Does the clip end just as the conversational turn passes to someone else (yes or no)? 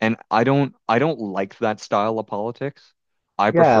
yes